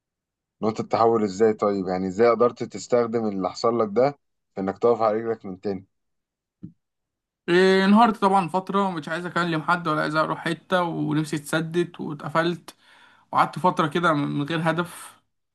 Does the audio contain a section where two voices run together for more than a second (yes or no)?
no